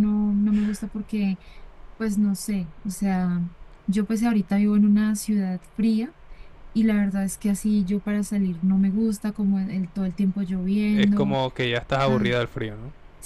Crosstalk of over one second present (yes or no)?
no